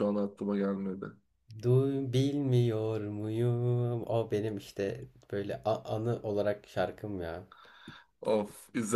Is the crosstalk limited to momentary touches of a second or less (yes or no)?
yes